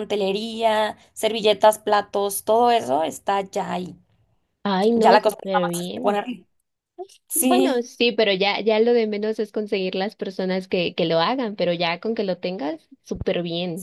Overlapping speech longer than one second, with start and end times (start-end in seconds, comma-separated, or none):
5.0-6.2